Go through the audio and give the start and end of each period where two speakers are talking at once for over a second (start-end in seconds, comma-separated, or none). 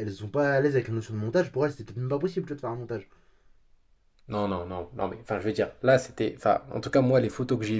none